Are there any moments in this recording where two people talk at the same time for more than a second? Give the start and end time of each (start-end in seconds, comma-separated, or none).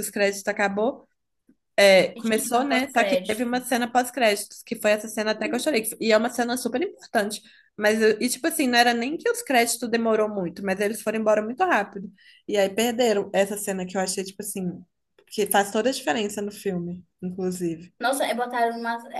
2.1-3.5